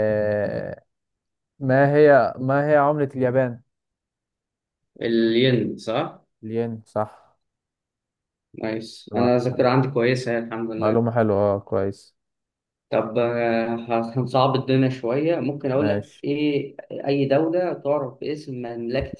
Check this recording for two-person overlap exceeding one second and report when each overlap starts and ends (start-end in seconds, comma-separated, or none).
none